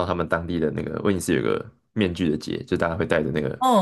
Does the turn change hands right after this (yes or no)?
no